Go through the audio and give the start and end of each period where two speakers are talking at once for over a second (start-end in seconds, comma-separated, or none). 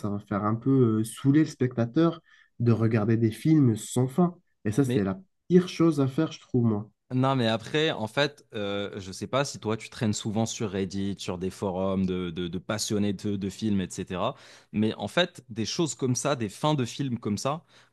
none